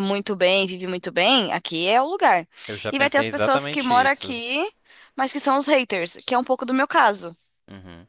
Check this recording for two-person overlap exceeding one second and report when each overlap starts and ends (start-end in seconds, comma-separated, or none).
2.9-4.3